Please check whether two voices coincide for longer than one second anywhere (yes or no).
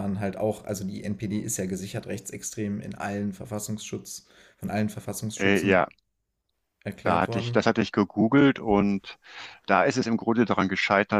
no